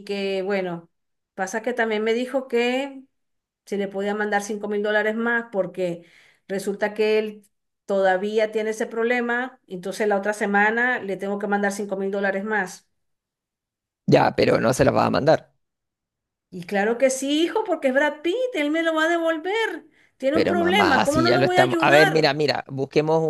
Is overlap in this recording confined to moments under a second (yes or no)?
no